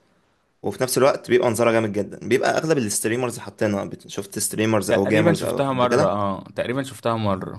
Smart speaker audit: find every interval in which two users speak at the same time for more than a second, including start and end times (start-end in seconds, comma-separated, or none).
4.9-6.1